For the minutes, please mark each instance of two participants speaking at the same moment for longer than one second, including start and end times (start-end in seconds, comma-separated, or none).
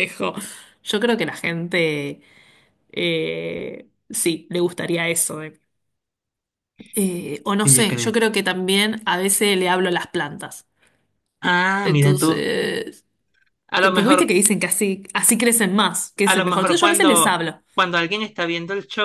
16.2-17.6